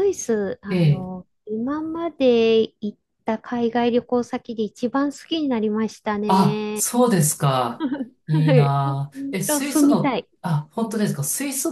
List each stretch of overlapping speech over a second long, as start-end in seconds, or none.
8.3-10.3